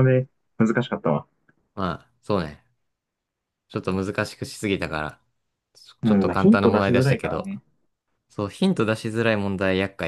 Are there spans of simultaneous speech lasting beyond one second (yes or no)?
yes